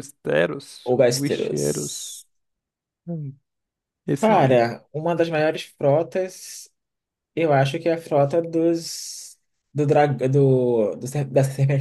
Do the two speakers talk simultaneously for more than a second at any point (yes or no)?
yes